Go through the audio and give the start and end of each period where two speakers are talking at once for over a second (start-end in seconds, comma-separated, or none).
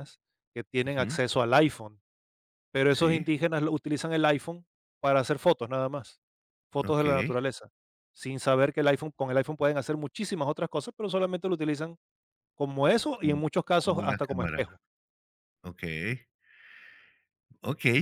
13.1-14.6